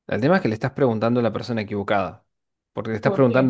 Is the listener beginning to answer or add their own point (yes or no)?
no